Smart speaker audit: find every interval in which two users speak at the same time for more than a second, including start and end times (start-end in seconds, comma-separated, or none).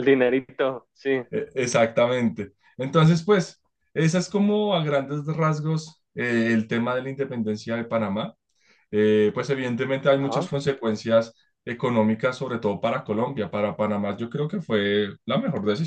none